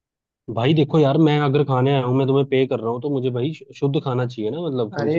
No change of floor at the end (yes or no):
no